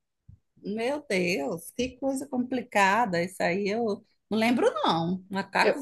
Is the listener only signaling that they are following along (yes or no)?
yes